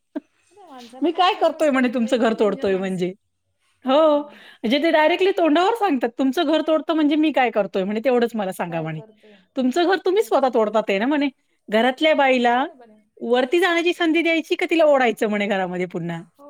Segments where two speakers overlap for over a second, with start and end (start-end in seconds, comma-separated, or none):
1.0-3.1